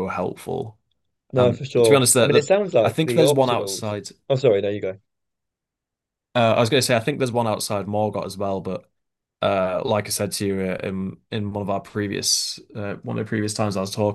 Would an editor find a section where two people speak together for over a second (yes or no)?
yes